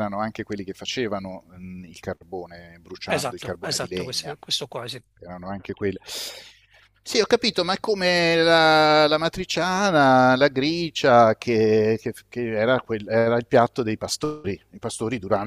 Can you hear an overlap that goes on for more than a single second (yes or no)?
yes